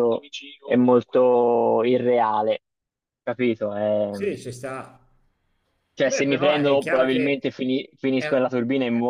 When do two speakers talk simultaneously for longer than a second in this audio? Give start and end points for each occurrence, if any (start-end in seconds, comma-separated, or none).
6.0-7.4